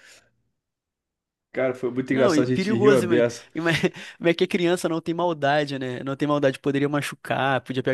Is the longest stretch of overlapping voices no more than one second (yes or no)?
no